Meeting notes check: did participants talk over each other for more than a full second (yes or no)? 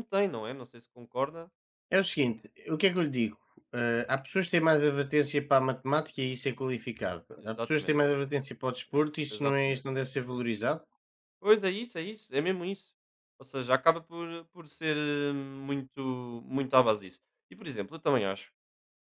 no